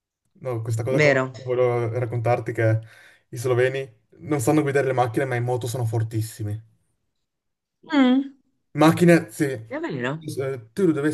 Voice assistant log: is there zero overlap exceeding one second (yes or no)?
yes